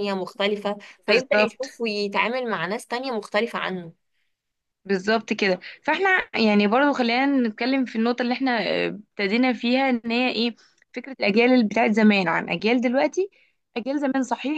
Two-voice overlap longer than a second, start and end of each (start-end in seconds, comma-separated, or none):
none